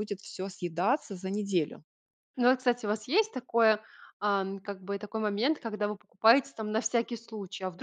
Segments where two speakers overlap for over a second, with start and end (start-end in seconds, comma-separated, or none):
none